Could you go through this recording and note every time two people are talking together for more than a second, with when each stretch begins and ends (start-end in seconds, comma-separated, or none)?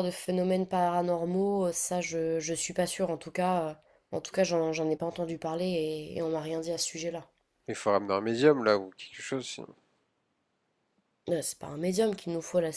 none